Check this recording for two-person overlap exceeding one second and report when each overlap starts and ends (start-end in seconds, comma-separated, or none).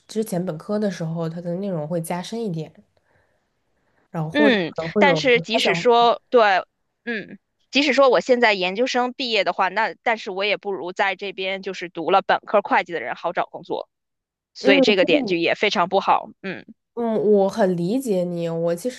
4.3-5.8